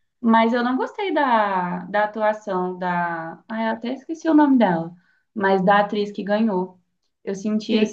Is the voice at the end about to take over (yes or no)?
yes